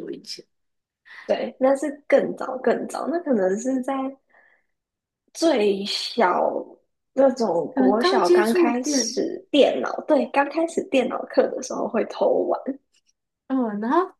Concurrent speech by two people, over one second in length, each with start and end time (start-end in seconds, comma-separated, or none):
7.7-9.2